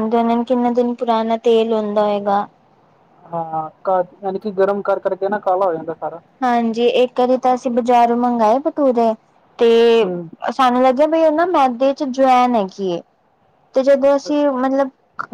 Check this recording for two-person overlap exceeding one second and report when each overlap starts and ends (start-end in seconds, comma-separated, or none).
none